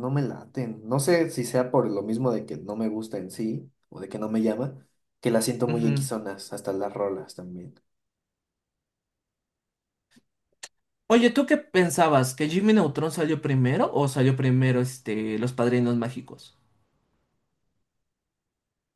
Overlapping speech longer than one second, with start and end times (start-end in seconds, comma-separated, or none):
none